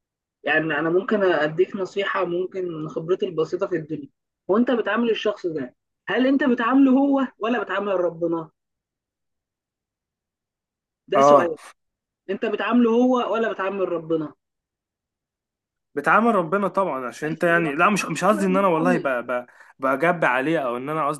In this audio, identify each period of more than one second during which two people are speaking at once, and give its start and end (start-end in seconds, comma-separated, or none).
17.2-19.1